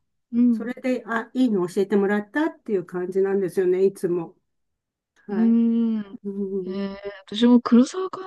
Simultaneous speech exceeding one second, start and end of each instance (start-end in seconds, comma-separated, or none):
none